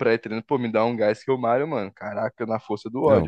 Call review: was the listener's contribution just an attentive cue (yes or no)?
no